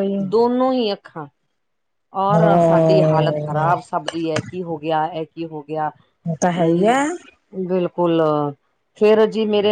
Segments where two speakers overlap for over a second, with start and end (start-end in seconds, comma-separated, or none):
2.4-3.7